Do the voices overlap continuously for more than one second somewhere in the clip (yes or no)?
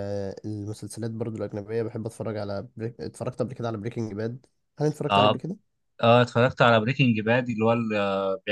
no